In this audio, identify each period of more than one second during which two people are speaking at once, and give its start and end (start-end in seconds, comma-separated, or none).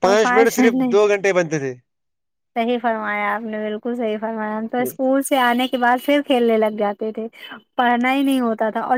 none